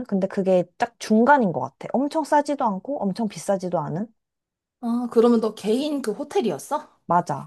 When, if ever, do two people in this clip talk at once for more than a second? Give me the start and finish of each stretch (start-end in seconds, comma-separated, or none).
none